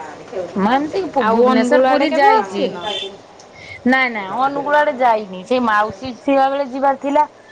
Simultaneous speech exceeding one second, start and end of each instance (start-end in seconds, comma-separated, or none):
1.3-2.7